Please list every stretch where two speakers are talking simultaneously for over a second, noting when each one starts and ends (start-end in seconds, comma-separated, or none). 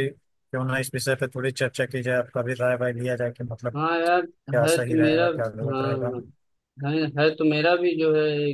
4.6-6.1